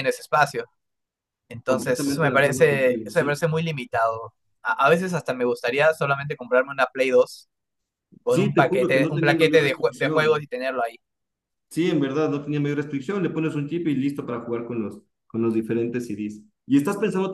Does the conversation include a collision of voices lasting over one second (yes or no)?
yes